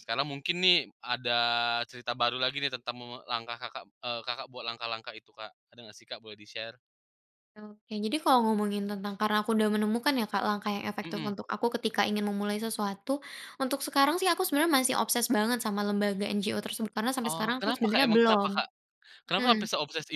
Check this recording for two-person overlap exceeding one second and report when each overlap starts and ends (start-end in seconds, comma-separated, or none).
17.2-18.5